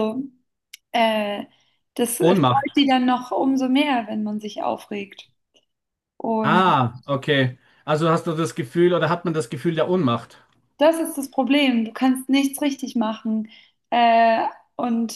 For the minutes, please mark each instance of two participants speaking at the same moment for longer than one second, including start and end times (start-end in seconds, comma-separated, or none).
none